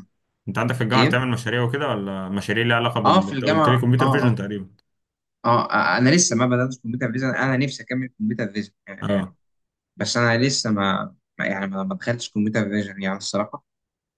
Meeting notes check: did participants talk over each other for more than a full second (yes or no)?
yes